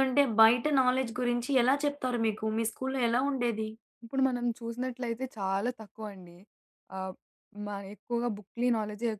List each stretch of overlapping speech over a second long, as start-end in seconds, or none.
none